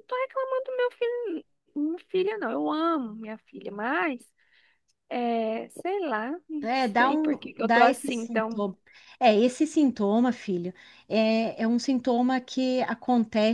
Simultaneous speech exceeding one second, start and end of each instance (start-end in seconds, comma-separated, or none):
6.6-8.6